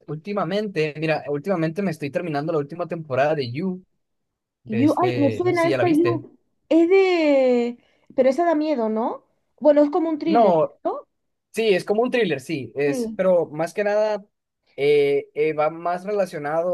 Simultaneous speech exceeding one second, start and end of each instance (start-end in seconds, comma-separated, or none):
4.7-6.2